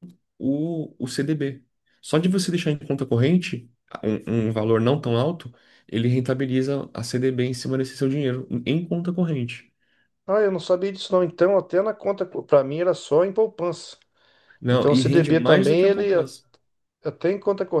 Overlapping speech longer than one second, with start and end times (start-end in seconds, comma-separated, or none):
14.7-16.3